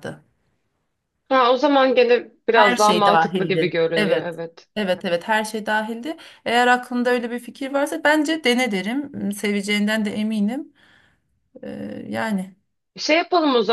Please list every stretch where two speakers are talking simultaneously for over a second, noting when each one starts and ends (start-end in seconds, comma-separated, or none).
2.5-4.3